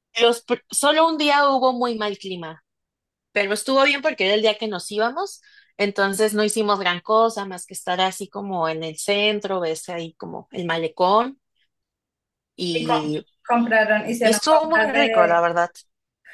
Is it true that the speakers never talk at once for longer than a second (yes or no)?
no